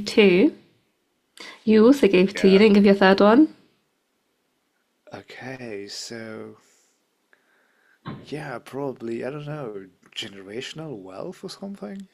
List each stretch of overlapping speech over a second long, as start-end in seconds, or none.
none